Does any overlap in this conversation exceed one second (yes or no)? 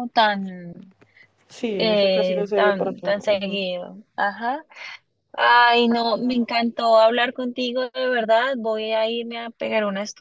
yes